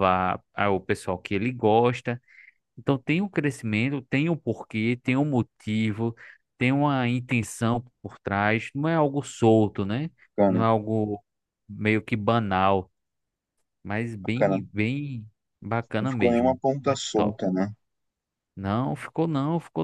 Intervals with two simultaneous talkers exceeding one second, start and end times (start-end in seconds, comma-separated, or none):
16.0-17.4